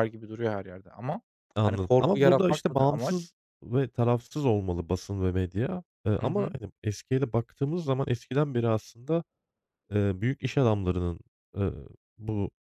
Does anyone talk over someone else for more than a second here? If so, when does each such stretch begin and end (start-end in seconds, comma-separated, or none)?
1.6-3.2